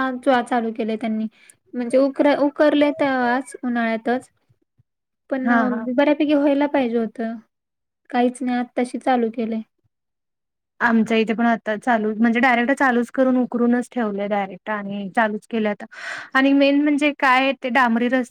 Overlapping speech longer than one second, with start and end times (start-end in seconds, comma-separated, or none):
none